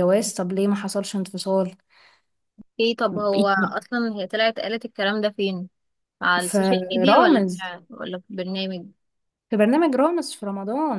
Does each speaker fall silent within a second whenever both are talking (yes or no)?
no